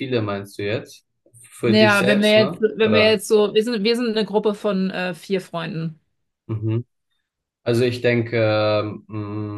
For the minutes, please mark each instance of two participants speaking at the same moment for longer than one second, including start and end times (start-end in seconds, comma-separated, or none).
1.6-3.2